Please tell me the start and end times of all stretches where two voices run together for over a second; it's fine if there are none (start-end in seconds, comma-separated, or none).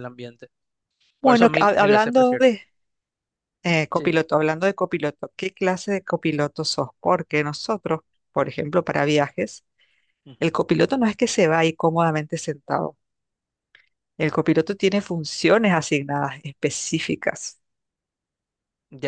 1.2-2.5